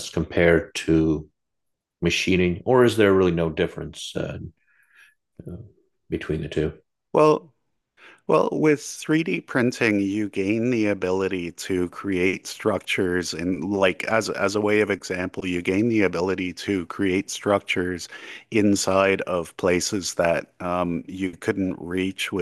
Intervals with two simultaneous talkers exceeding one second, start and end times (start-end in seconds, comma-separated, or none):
none